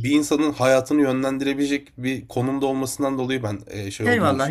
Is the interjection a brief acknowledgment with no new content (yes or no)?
no